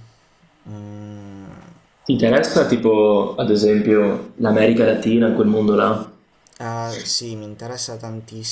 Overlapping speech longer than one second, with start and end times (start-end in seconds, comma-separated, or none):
none